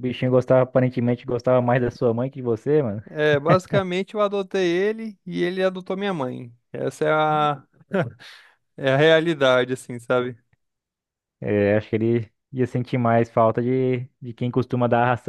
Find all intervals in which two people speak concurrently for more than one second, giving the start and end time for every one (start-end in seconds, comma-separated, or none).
none